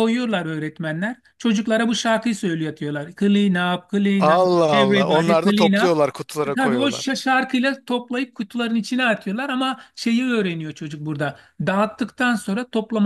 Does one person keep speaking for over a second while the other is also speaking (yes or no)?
yes